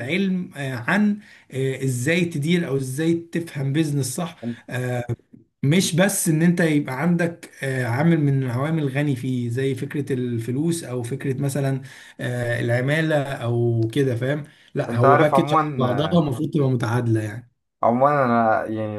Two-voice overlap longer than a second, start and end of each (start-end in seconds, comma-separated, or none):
14.9-16.2